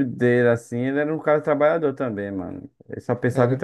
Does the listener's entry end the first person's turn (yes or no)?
yes